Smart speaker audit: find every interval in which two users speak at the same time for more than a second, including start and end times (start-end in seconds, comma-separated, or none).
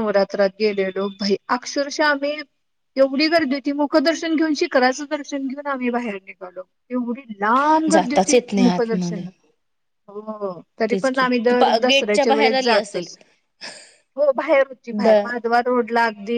7.9-9.2, 10.9-13.1